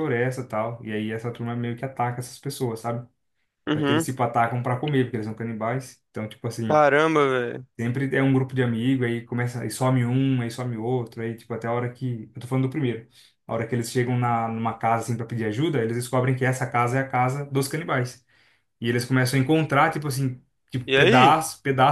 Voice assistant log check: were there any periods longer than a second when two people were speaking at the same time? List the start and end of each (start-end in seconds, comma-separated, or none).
none